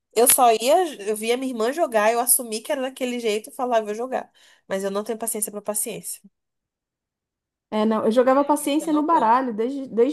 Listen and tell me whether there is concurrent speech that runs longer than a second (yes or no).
no